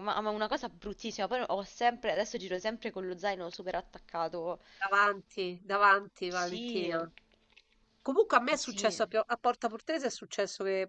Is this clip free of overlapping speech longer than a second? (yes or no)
yes